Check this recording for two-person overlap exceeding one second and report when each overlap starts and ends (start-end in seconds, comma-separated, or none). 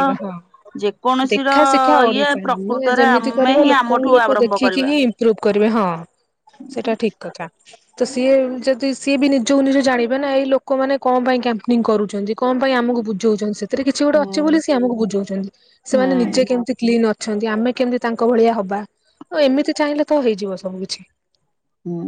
2.1-4.9